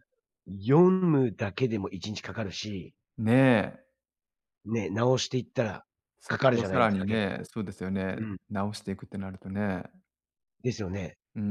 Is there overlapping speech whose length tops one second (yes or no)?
yes